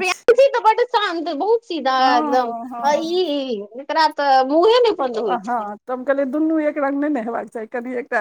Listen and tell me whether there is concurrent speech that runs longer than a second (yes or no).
no